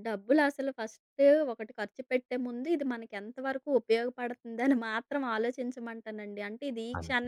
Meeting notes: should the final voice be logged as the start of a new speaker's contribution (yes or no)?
no